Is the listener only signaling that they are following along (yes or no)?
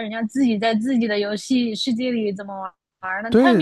no